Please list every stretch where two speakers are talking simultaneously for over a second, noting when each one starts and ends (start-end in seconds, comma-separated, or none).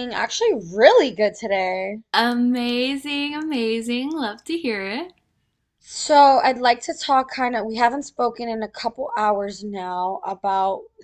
none